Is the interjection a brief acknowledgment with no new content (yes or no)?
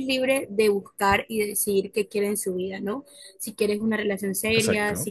yes